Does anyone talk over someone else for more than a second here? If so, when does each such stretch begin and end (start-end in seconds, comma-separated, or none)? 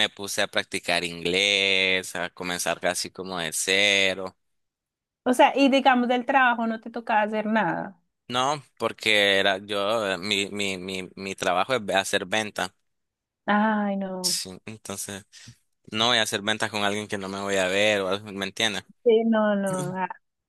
none